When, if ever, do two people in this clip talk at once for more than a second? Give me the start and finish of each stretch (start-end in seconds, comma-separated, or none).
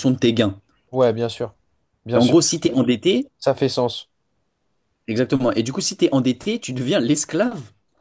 none